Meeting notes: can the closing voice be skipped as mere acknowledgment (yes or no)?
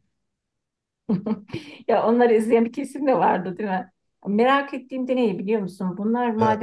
yes